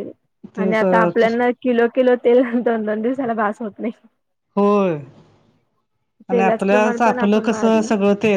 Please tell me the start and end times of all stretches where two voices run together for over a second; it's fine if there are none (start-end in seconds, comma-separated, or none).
6.3-7.8